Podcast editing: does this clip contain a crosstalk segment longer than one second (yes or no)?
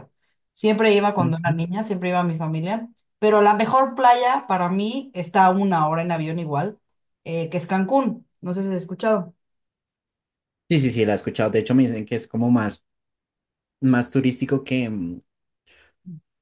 no